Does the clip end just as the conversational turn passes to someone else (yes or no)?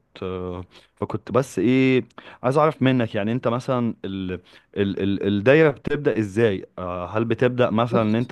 no